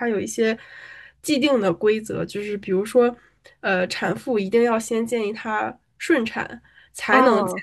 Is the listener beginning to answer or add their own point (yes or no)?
no